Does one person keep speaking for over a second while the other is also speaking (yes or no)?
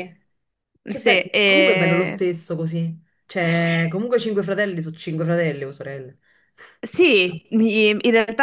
yes